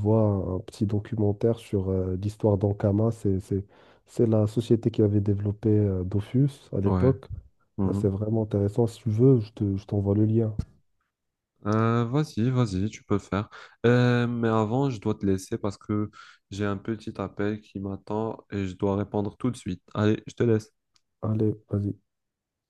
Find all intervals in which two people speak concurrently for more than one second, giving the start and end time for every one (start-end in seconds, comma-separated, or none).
none